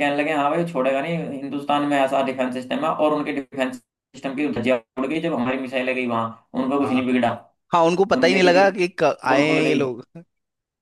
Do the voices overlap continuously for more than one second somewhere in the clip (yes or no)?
yes